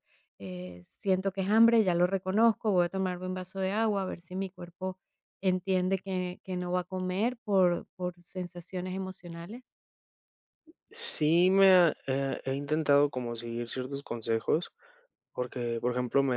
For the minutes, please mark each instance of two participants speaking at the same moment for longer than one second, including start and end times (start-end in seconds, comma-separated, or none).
none